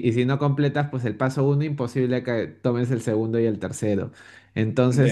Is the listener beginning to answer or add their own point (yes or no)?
no